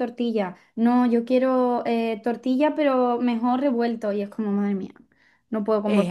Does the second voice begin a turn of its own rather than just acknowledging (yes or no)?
yes